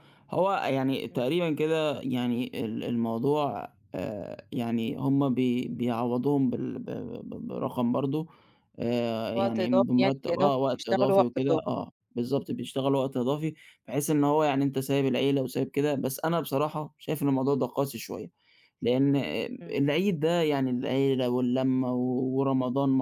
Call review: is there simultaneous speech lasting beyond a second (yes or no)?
yes